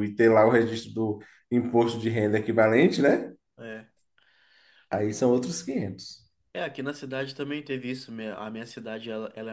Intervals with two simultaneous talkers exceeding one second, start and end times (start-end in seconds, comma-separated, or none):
none